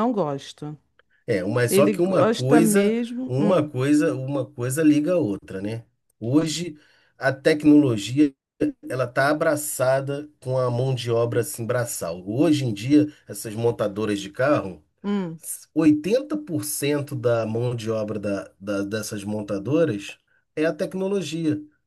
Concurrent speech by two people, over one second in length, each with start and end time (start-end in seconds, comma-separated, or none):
1.7-3.7